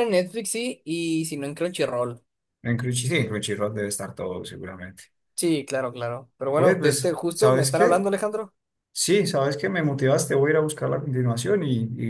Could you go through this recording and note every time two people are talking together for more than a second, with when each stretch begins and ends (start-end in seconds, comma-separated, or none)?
6.5-8.1